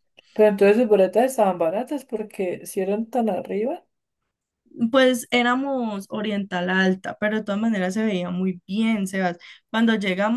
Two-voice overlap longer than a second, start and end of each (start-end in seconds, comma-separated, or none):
none